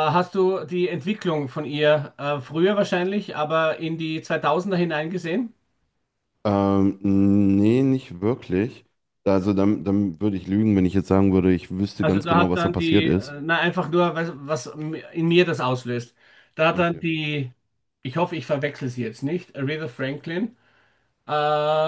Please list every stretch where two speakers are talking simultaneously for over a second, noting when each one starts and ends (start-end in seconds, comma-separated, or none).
12.0-13.4